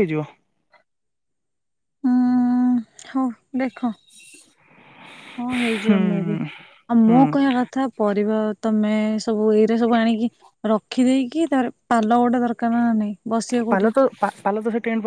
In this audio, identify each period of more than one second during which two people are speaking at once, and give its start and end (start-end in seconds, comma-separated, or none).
none